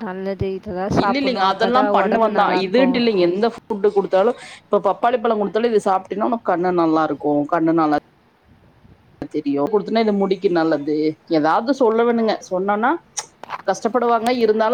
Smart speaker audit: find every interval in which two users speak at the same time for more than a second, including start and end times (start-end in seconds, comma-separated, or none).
1.0-3.0